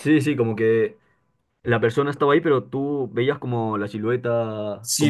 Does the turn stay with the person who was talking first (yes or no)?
no